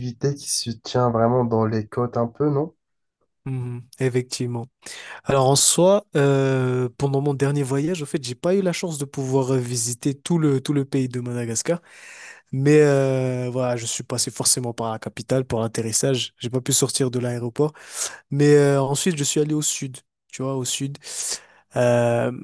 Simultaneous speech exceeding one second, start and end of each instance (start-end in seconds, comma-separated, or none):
none